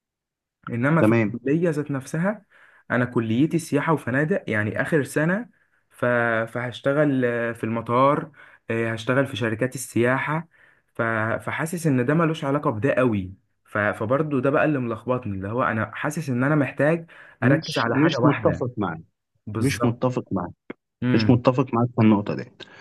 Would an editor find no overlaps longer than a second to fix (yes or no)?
no